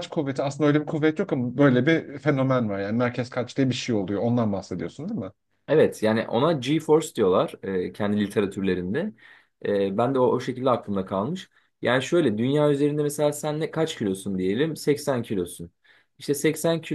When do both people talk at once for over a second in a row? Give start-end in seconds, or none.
none